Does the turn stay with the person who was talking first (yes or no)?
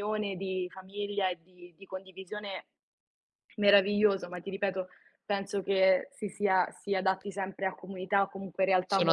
no